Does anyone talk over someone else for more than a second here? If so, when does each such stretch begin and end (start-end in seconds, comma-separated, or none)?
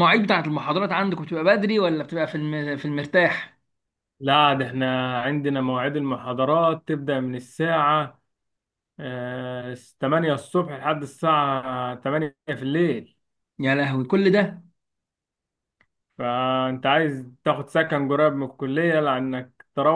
none